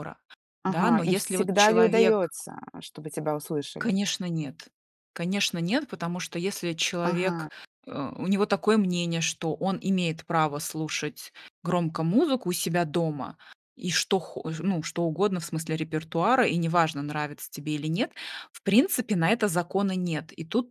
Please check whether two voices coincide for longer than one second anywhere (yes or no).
yes